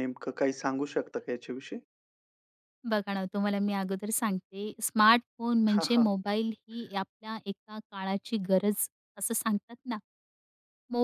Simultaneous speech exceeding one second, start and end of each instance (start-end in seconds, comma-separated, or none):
none